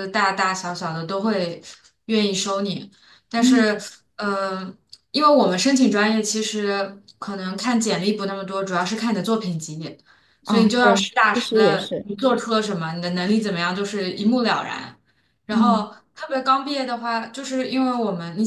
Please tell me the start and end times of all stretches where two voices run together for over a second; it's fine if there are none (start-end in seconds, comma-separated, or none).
10.4-12.1